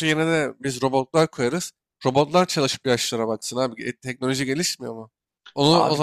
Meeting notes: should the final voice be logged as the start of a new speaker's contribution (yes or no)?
no